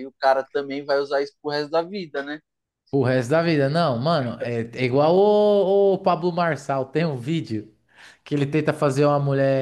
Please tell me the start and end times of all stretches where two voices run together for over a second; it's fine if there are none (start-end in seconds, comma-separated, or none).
none